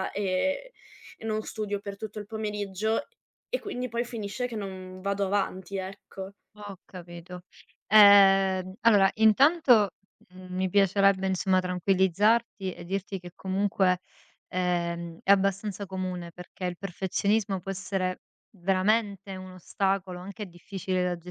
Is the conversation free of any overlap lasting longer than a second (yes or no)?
yes